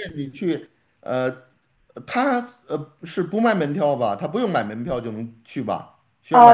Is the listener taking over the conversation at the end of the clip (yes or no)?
yes